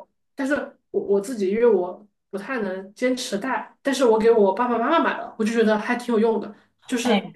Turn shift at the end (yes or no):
no